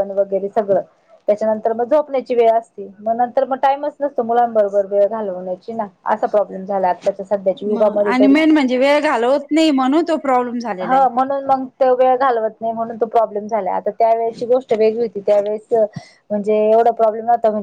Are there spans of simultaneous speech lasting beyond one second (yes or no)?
no